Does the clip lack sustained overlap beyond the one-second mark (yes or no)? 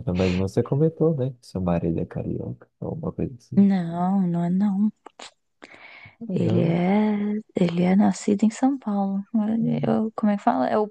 yes